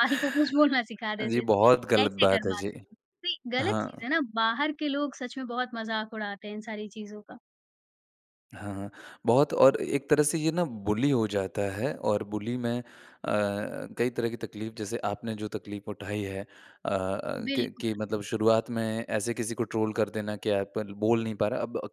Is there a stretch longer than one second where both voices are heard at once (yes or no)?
yes